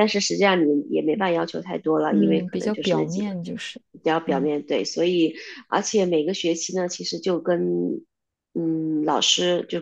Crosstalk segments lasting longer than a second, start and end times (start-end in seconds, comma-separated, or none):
2.1-3.3